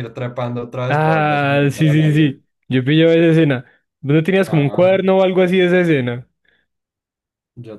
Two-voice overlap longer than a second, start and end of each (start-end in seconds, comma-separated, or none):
0.9-2.5